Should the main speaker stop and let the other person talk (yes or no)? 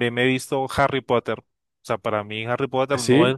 no